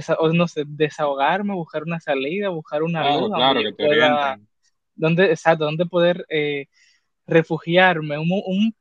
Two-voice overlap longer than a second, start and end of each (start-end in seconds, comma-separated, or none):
3.0-4.4